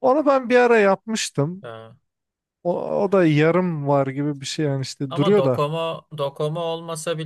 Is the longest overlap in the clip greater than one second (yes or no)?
no